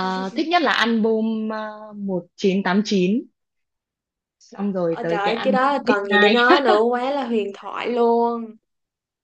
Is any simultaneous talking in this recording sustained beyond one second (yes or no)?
yes